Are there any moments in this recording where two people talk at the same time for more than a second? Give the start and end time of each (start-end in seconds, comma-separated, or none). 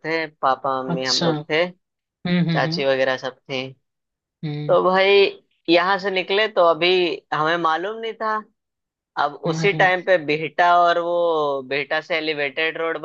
none